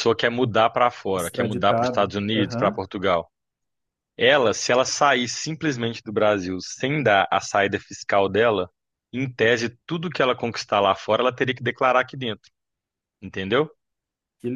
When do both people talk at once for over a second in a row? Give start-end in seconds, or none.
1.1-2.9